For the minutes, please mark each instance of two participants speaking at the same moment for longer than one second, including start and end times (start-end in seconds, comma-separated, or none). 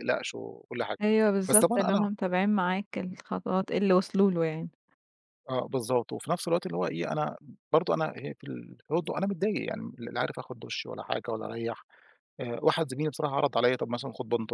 none